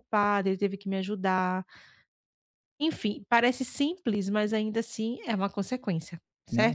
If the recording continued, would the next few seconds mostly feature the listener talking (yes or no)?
yes